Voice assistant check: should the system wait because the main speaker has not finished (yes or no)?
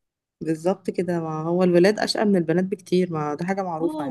no